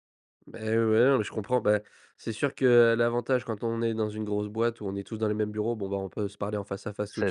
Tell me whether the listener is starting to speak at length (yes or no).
no